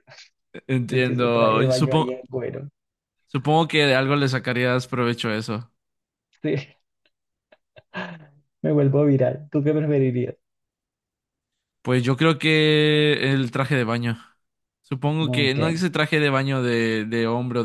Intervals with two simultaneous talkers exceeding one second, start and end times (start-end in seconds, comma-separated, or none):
0.9-2.2